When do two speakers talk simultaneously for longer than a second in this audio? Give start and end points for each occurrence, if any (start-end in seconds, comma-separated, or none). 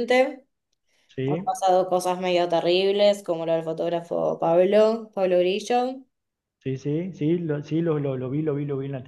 none